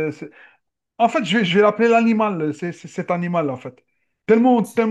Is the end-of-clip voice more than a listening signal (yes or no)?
no